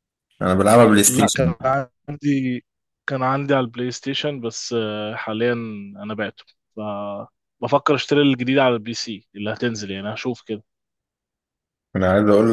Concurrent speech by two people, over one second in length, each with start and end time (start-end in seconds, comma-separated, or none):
none